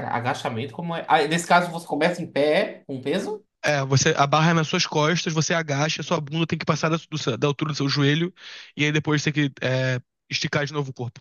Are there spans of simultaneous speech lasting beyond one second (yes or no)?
no